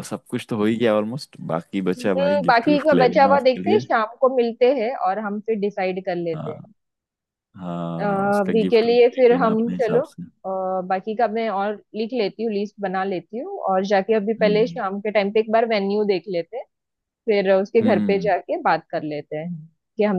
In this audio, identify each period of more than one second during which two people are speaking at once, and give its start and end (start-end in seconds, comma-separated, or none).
2.0-3.8, 8.1-10.0